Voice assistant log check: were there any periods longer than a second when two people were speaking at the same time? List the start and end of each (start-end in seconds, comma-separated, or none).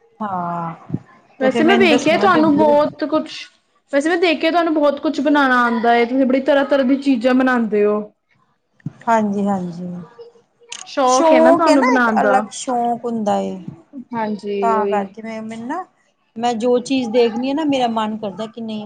1.4-2.8